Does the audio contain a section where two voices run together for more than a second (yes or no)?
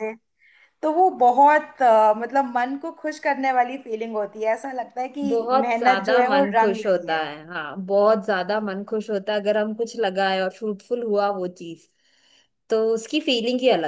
yes